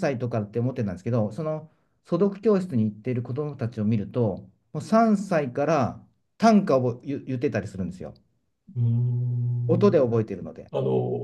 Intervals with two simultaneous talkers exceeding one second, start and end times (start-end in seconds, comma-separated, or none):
none